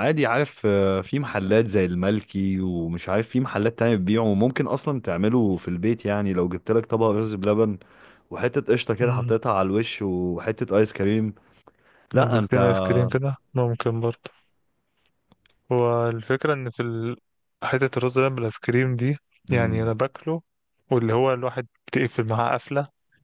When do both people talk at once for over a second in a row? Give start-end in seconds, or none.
none